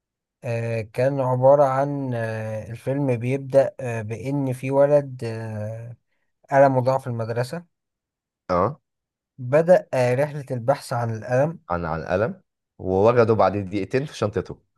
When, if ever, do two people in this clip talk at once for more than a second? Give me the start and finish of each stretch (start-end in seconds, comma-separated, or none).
none